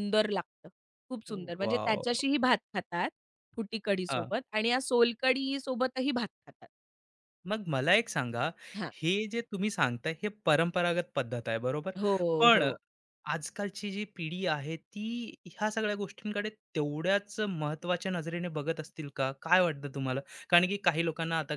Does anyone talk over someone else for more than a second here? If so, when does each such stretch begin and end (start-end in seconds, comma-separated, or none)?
none